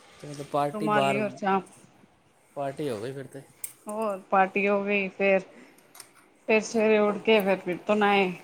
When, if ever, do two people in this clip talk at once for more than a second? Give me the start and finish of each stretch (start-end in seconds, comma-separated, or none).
none